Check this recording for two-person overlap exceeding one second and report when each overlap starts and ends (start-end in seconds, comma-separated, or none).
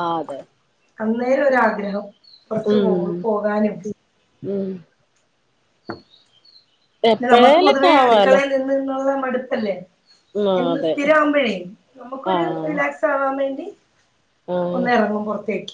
7.1-8.4